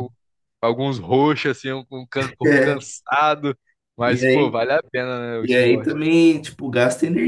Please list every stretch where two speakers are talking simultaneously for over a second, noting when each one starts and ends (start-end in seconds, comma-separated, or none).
none